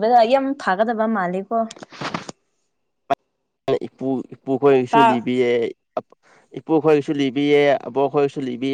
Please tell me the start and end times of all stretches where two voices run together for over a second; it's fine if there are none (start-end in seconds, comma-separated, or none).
none